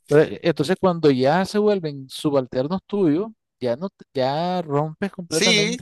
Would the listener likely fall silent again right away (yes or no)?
no